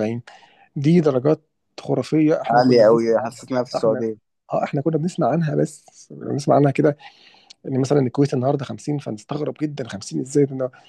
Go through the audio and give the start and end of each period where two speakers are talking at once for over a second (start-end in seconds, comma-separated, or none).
2.5-4.0